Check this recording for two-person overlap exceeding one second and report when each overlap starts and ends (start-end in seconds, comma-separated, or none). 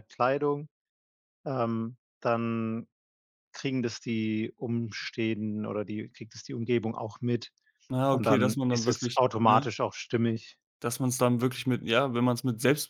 8.1-9.7